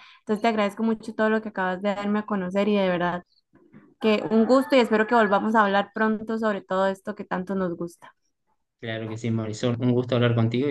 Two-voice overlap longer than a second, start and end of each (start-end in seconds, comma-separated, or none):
none